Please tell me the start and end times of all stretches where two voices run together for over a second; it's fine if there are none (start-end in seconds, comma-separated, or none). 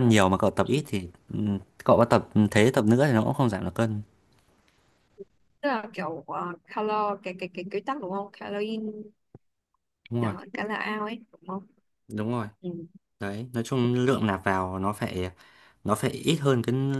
none